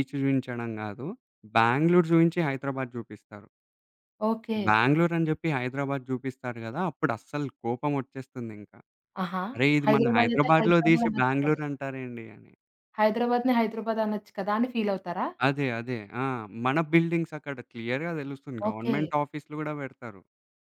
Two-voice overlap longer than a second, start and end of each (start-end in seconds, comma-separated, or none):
9.8-11.6